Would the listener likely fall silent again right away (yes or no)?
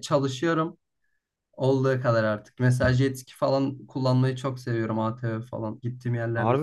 no